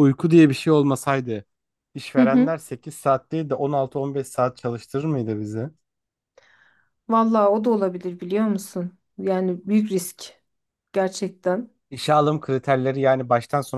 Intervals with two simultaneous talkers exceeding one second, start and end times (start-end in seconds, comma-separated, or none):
none